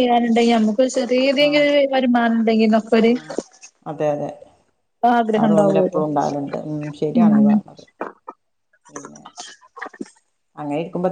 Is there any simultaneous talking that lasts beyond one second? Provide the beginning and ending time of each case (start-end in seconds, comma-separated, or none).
none